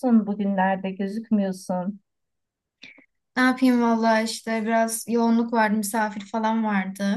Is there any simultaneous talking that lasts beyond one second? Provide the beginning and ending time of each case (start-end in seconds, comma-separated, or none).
none